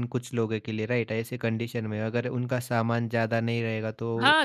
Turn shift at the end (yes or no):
yes